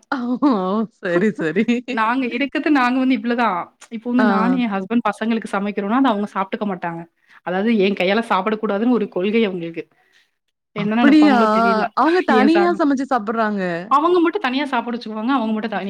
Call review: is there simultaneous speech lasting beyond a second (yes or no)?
no